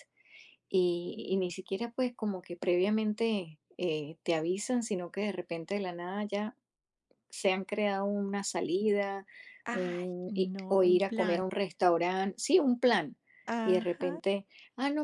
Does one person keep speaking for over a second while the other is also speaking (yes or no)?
yes